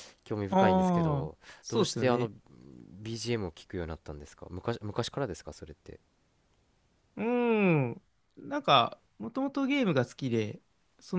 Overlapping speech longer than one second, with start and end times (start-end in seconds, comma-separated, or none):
0.5-2.3